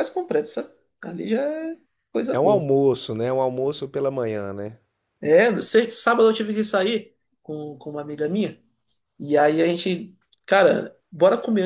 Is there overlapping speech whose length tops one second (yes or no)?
no